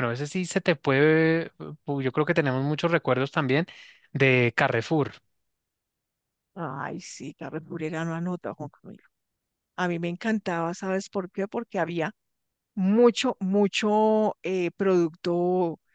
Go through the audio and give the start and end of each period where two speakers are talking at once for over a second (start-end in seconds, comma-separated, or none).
none